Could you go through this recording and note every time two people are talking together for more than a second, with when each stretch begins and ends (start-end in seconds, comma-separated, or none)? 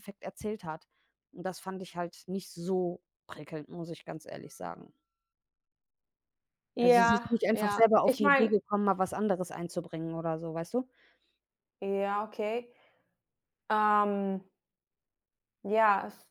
6.8-8.5